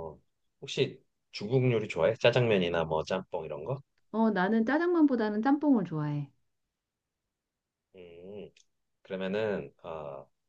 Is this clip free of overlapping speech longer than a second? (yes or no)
yes